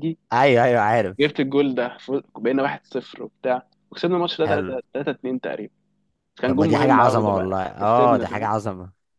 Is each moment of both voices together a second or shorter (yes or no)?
no